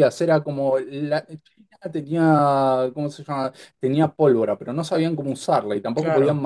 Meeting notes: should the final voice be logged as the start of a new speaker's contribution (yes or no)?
no